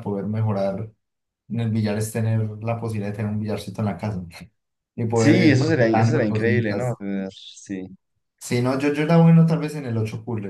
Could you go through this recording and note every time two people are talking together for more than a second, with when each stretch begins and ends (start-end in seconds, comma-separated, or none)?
5.1-7.0